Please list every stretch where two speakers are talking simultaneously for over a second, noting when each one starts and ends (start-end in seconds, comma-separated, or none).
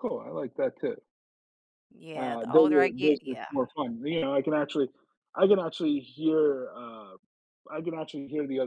2.1-3.5